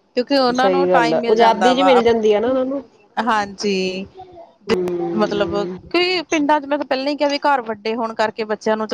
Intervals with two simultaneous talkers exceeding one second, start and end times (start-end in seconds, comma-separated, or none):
0.6-1.9